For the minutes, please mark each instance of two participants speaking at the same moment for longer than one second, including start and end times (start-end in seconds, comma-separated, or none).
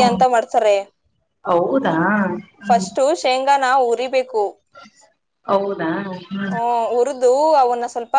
none